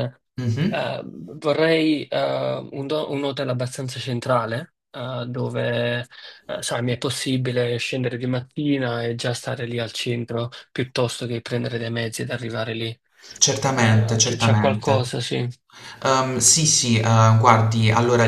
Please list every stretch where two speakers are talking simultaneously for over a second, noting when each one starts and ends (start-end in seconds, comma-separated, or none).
13.7-15.1